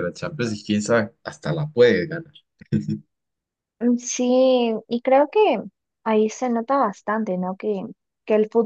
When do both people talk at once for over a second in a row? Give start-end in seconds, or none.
none